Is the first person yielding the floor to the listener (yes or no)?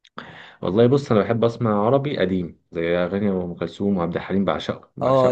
yes